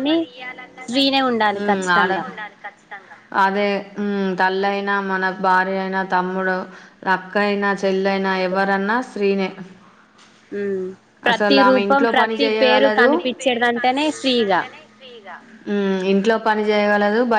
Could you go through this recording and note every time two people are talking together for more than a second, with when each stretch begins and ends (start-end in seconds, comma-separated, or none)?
11.3-13.1